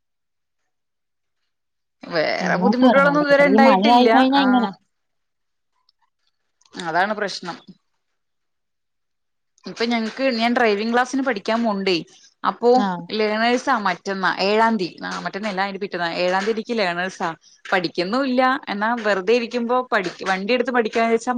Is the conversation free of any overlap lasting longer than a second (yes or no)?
no